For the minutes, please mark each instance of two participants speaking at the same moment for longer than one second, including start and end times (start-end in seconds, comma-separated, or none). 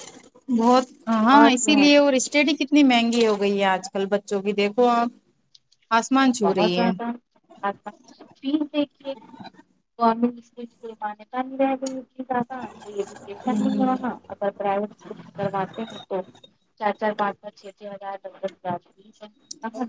none